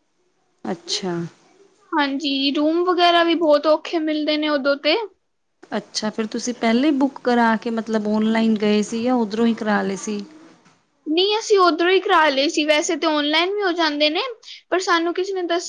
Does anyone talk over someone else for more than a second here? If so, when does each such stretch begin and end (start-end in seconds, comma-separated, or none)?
none